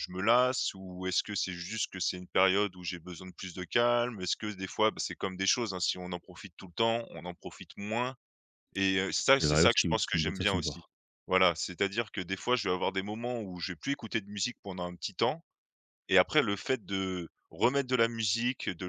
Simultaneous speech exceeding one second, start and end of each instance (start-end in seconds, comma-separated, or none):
9.4-10.8